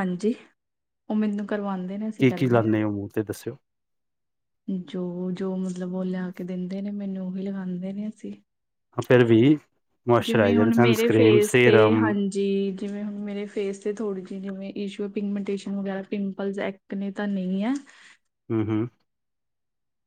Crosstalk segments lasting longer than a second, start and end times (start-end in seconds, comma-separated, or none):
10.2-12.1